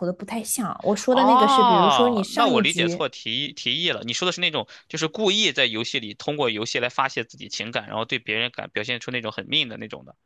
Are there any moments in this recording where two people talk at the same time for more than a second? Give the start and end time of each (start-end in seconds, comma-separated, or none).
1.1-3.0